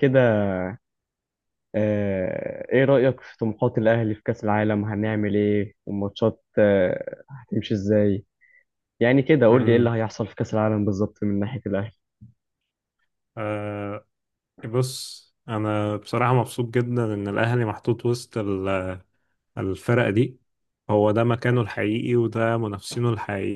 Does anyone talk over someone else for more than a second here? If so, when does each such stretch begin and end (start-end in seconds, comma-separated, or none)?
none